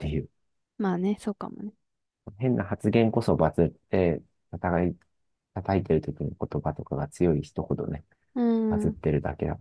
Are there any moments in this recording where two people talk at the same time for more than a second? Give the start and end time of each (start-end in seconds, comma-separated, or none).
none